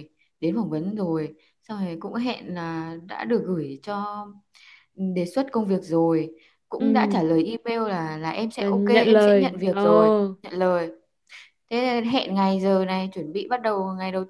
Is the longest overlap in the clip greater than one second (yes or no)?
yes